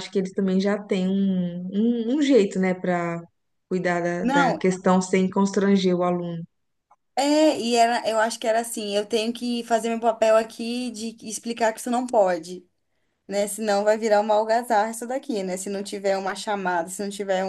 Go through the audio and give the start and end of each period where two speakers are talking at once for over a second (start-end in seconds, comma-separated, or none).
none